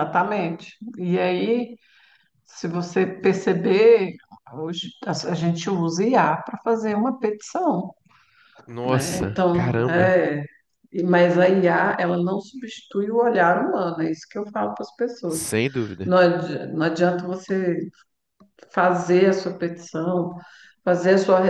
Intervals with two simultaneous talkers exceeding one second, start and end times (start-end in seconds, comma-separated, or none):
8.8-10.1